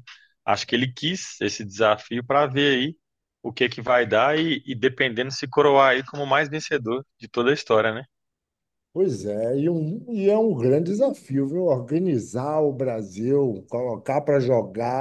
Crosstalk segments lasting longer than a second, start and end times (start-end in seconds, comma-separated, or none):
none